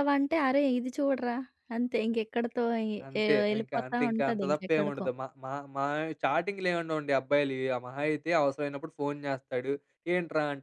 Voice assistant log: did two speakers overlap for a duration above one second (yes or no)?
yes